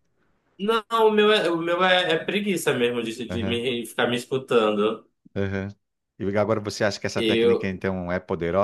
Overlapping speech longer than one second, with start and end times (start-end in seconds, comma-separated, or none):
none